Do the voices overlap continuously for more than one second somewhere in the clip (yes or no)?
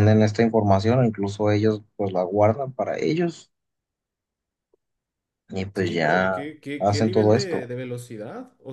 yes